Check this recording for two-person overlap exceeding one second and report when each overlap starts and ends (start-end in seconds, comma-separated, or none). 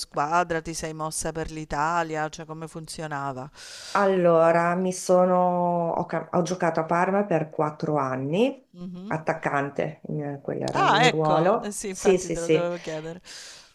10.8-12.7